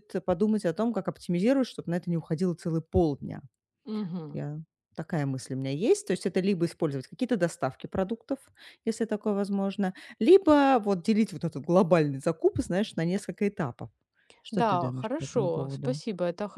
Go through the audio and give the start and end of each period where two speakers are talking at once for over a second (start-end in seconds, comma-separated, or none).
14.5-16.0